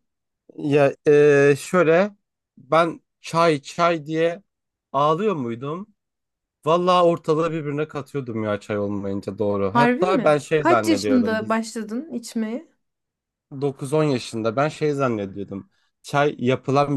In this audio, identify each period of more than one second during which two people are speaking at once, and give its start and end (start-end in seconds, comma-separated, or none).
9.7-11.4